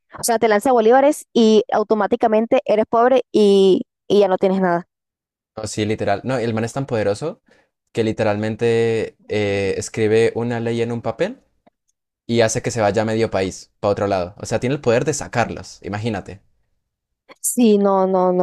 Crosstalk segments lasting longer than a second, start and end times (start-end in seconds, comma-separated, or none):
none